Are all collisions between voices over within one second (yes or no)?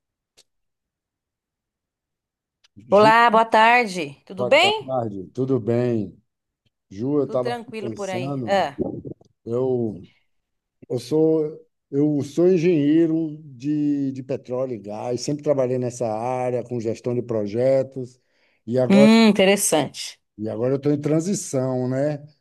no